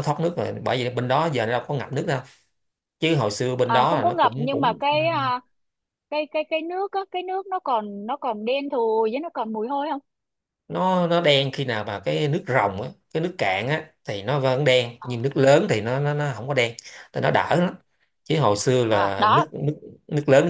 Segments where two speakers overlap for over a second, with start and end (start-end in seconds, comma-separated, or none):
3.6-5.0